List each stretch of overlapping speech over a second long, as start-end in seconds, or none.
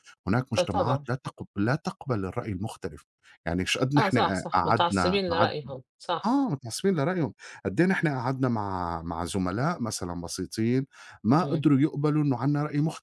4.0-5.5